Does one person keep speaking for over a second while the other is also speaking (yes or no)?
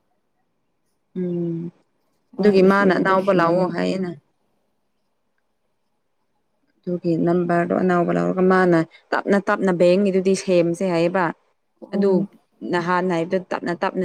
yes